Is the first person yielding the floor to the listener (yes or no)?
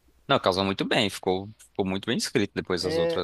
yes